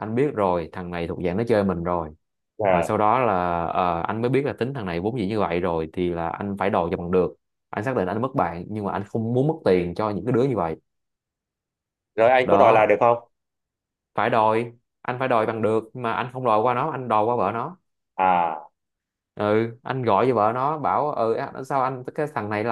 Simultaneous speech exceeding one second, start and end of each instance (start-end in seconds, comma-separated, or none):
none